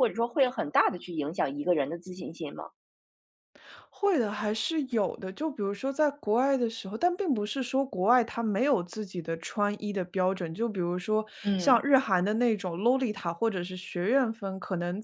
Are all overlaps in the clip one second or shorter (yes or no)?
yes